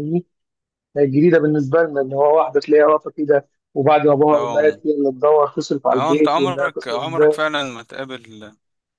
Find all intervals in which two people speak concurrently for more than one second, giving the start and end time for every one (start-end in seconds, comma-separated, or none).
5.9-7.4